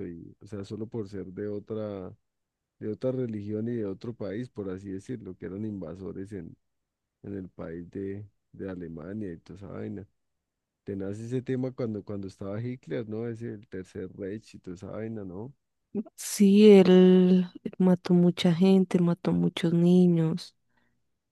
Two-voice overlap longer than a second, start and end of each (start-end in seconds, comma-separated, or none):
none